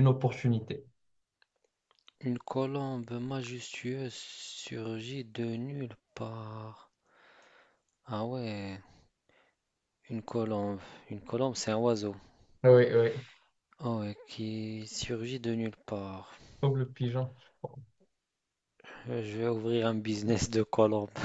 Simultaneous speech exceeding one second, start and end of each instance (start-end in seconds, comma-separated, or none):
none